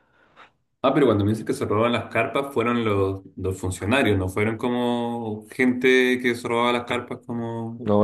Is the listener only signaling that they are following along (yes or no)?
no